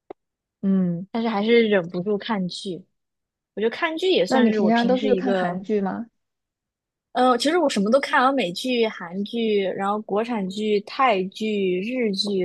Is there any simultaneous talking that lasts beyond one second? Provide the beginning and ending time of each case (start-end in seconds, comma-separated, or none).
4.3-5.6